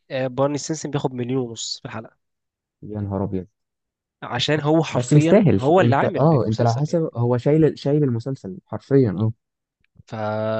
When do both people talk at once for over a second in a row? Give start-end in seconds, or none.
4.9-7.1